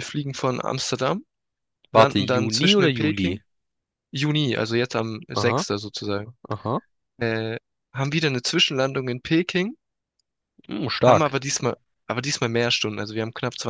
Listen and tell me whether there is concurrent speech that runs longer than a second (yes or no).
yes